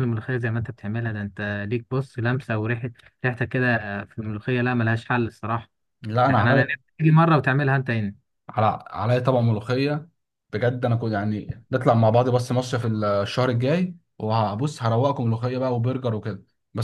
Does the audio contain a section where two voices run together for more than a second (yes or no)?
no